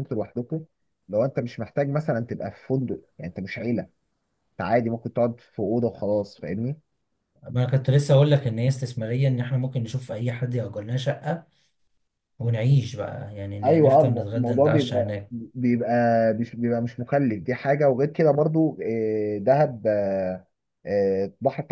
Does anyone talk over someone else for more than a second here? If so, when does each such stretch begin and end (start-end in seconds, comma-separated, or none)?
13.6-15.3